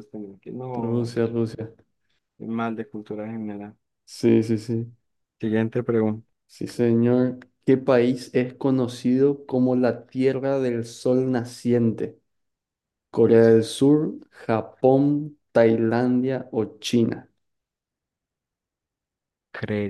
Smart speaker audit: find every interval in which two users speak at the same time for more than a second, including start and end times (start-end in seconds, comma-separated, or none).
none